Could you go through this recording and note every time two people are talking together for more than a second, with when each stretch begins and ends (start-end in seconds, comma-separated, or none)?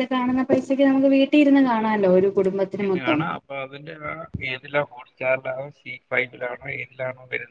none